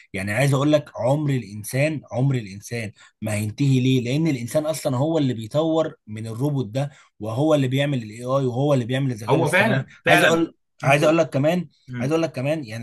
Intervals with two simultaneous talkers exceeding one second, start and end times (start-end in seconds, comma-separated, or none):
9.3-11.1